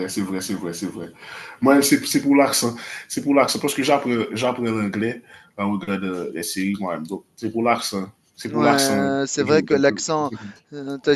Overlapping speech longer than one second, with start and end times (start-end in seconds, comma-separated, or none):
8.5-9.8